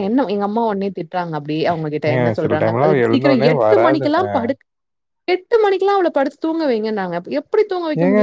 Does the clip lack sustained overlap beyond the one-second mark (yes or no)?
no